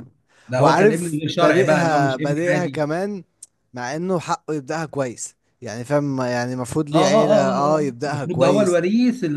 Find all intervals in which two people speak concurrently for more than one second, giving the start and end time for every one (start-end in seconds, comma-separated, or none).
0.6-2.8, 6.9-8.8